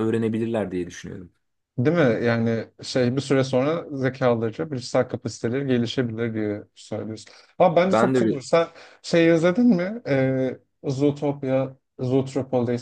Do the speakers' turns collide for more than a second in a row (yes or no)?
no